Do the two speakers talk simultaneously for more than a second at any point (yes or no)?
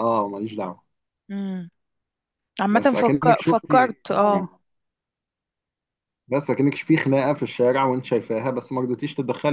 yes